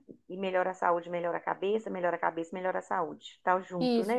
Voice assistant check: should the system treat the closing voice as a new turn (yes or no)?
yes